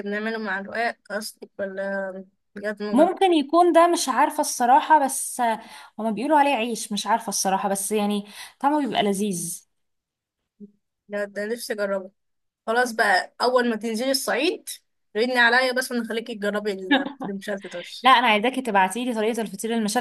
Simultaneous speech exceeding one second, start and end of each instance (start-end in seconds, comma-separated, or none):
none